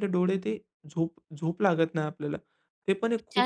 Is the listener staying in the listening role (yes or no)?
no